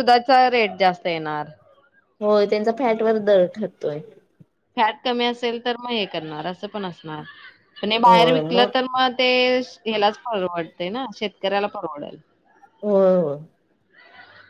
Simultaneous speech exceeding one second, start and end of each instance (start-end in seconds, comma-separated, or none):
none